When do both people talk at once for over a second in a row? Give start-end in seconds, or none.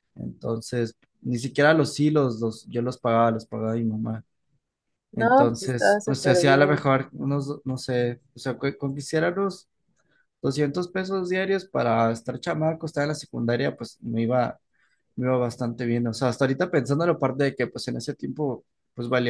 5.1-6.9